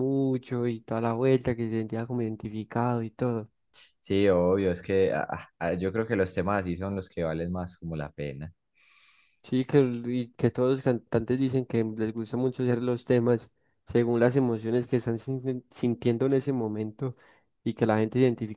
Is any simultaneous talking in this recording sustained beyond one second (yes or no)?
no